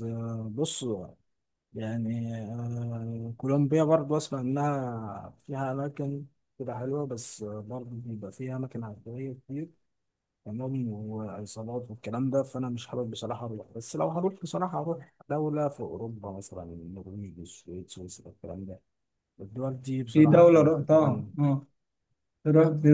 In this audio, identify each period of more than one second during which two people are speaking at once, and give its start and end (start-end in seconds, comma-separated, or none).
20.1-21.5